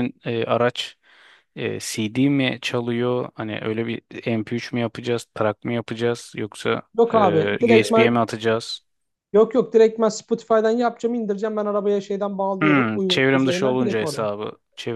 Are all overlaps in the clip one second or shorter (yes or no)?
no